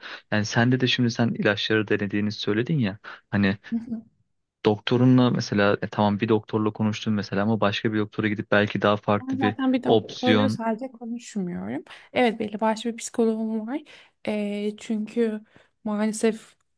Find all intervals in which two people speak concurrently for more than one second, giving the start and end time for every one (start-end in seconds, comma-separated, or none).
9.2-10.6